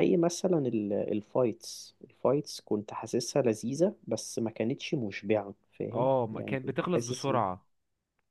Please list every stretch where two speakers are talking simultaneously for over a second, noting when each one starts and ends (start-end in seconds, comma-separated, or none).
5.9-7.4